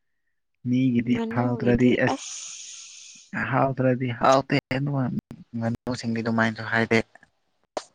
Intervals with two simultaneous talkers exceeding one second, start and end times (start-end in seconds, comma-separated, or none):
1.1-3.4